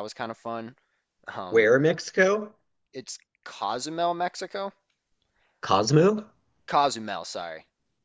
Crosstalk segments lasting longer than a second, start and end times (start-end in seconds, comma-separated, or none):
none